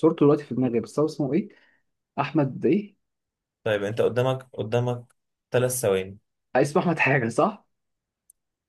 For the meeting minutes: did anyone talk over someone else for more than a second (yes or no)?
no